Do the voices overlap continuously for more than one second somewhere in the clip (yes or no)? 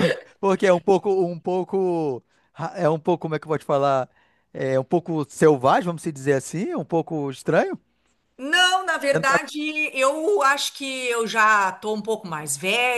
no